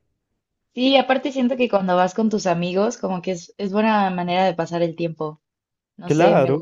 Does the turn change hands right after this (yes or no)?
yes